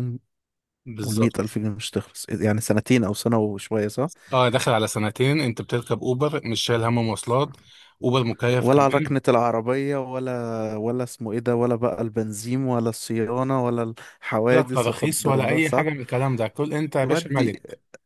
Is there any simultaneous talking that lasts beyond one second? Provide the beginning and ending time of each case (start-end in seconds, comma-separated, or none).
14.5-15.9